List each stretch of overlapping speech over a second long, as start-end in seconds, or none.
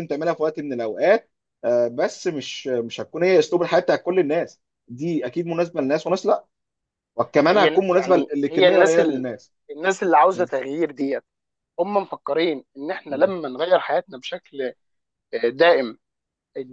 7.5-9.2